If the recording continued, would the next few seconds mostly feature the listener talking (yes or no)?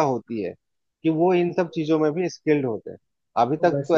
no